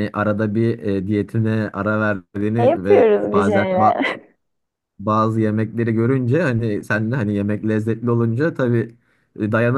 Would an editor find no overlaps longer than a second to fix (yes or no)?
no